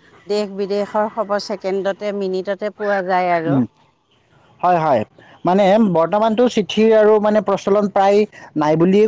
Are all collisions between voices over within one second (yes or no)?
yes